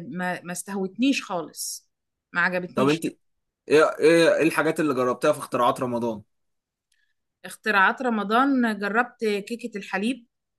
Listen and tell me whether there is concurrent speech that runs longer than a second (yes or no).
no